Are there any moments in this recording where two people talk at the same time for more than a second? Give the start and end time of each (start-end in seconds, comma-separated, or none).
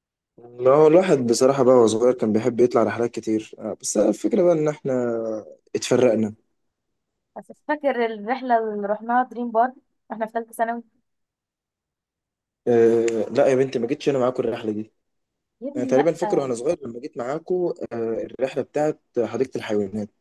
none